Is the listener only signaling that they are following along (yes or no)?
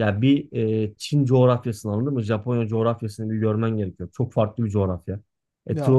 yes